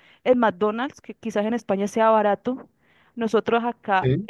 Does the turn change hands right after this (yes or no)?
no